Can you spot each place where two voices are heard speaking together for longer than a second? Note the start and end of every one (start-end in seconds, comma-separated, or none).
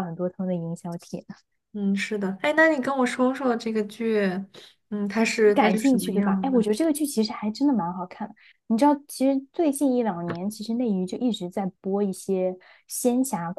5.4-6.7